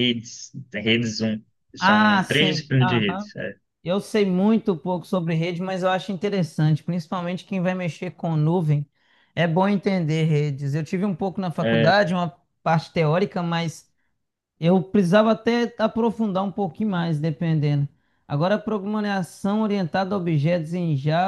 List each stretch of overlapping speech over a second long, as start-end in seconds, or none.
1.8-3.3